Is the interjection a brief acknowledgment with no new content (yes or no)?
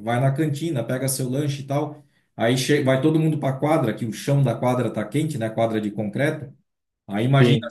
yes